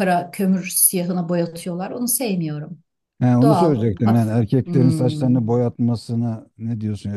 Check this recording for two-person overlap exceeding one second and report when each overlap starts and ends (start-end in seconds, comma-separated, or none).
3.4-5.3